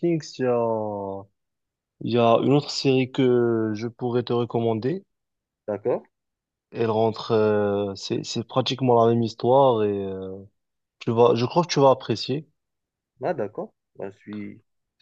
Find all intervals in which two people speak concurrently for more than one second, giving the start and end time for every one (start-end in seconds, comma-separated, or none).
none